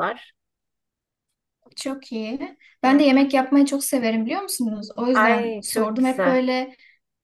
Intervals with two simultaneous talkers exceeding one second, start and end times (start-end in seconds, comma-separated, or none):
5.1-6.4